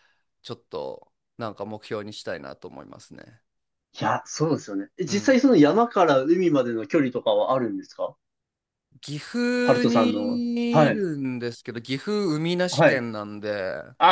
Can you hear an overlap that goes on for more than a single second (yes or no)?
yes